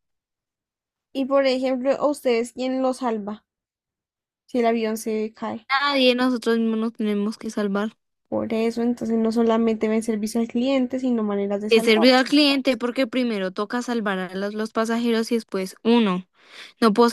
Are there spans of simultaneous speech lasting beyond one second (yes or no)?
no